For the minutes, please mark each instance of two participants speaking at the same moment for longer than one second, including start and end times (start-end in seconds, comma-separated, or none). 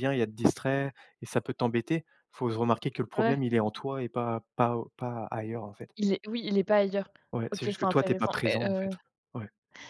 7.5-8.9